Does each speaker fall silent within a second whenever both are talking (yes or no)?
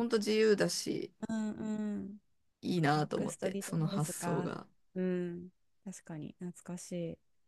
no